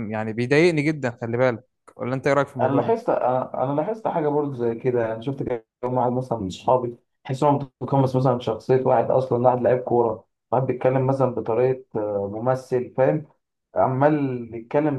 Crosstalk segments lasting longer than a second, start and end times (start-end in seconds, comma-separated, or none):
none